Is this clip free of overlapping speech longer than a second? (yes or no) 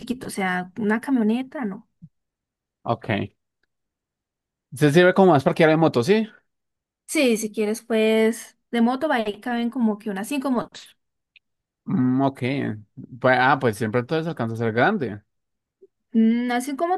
yes